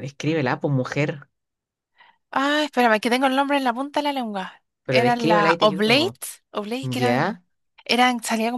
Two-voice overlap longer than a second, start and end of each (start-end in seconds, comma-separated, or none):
4.8-6.2